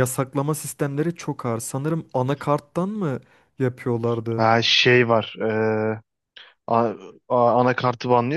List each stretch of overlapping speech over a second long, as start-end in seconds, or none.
none